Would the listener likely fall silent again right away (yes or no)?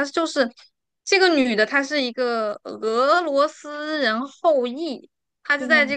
yes